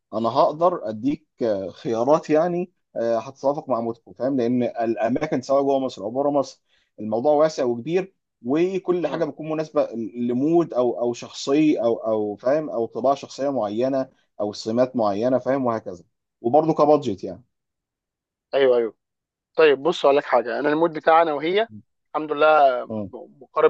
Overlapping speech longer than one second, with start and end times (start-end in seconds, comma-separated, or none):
none